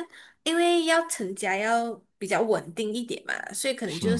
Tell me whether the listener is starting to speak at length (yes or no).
no